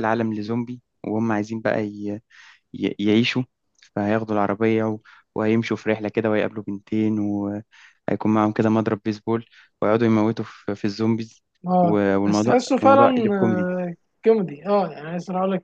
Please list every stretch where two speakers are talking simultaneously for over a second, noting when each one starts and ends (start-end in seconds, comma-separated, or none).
11.8-13.7